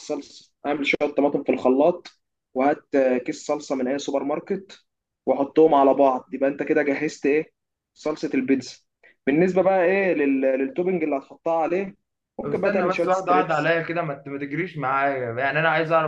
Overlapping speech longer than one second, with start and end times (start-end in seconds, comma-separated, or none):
12.4-13.7